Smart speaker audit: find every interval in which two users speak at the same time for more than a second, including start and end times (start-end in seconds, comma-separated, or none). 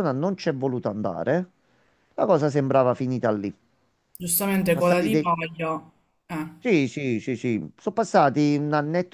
none